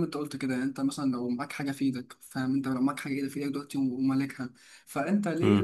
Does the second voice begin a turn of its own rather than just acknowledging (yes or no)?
no